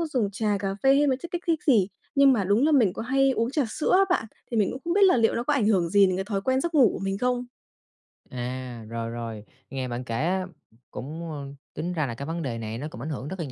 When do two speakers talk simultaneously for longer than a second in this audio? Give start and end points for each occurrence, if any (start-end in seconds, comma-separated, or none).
none